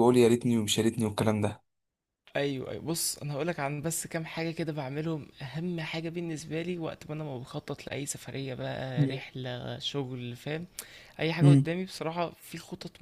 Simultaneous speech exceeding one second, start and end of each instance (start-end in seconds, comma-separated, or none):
none